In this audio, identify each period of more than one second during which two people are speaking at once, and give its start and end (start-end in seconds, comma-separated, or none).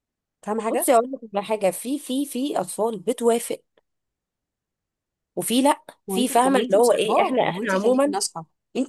6.1-8.2